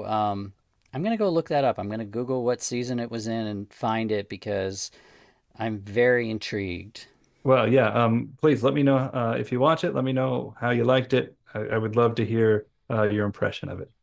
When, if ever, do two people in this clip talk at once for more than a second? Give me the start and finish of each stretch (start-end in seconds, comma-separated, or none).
none